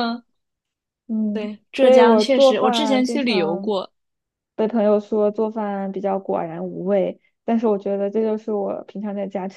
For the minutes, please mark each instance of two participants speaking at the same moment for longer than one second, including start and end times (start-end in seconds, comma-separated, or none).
1.3-3.7